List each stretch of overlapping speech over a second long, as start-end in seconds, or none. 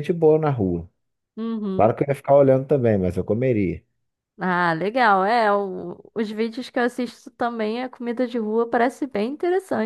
none